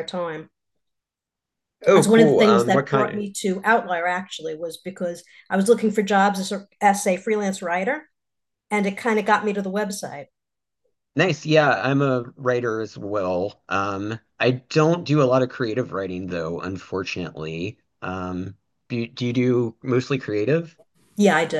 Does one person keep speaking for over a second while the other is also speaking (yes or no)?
yes